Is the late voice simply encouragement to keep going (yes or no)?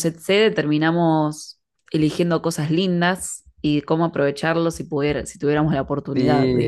no